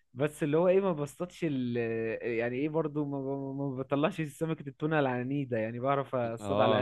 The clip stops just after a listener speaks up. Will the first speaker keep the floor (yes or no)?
no